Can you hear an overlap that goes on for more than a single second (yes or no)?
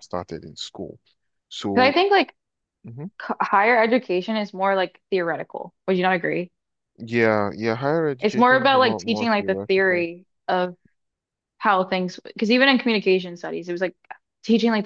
yes